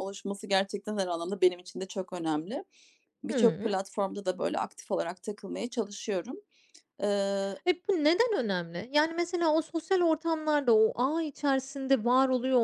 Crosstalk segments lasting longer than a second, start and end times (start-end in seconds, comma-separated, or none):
none